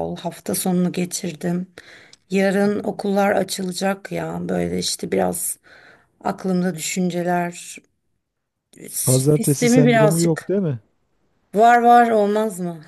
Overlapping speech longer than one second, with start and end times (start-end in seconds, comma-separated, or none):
9.0-10.5